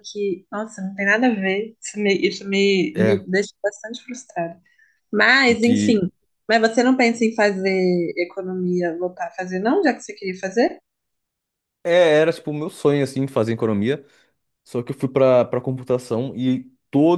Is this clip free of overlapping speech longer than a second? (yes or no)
yes